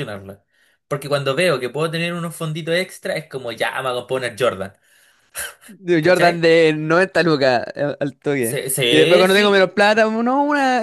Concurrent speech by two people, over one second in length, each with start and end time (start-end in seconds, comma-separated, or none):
8.4-9.8